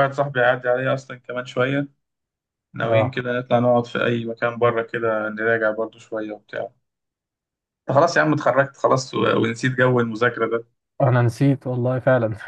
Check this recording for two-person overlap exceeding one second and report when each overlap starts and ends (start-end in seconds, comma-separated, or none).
none